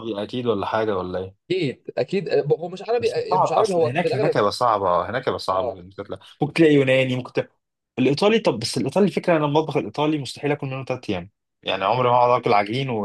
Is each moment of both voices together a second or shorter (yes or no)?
no